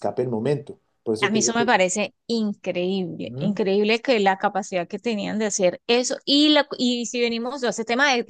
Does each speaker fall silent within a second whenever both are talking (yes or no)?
yes